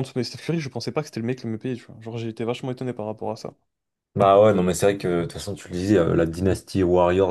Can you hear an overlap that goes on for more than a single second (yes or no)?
no